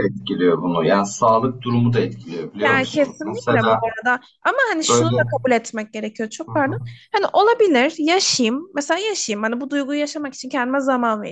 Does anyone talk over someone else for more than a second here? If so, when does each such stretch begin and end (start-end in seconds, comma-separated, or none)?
2.6-3.9